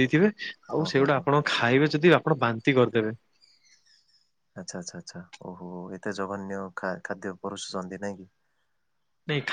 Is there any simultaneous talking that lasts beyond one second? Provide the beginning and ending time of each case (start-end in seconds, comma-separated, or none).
none